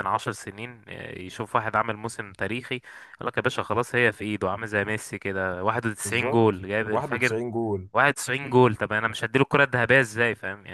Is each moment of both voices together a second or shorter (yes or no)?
no